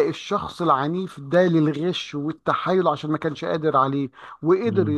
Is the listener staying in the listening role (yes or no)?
yes